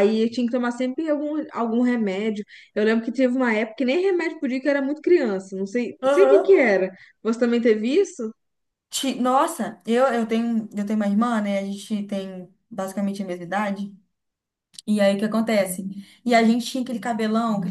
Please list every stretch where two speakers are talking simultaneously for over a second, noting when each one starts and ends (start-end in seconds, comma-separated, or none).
none